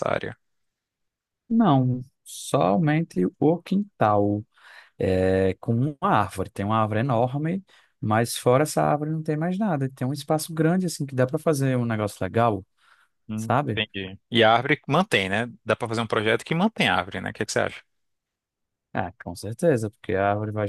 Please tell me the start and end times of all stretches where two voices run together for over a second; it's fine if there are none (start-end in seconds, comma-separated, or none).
none